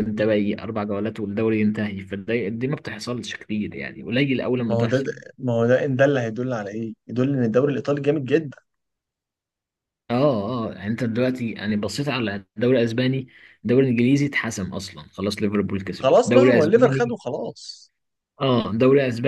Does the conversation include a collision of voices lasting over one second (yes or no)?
yes